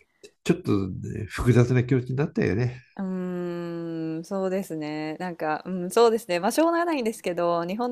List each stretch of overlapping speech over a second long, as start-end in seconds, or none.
none